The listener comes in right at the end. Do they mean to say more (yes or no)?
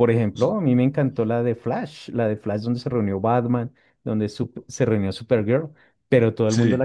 no